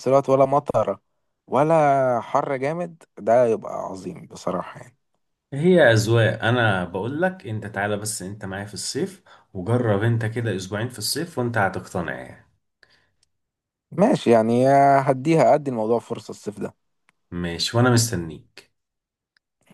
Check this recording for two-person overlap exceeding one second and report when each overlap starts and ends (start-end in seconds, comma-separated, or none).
none